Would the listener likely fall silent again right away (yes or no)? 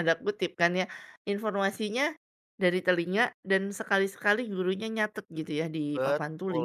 no